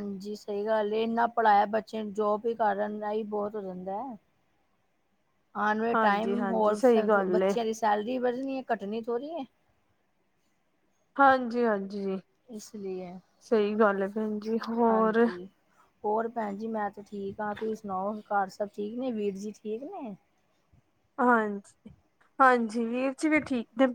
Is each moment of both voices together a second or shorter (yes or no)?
no